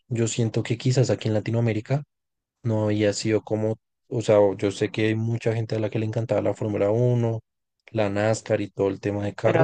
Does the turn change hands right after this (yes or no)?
yes